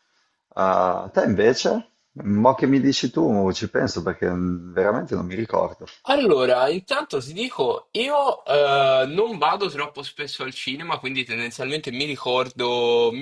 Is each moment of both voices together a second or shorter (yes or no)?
yes